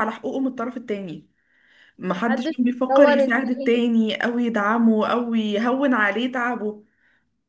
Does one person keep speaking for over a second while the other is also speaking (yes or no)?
yes